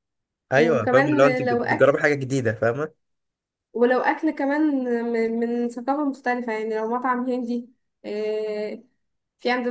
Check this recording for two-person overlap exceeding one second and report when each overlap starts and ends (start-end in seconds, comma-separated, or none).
0.5-1.9